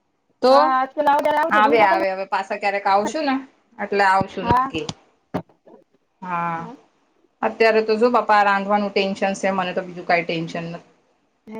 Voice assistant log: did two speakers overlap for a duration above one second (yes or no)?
yes